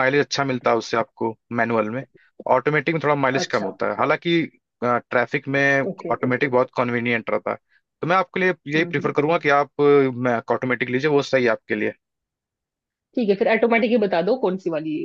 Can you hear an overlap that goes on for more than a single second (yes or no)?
no